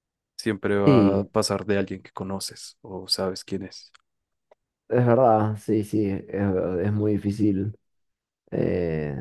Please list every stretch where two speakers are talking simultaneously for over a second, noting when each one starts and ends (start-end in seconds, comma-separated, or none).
none